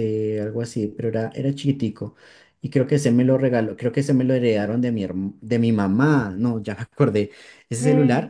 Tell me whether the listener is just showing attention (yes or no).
yes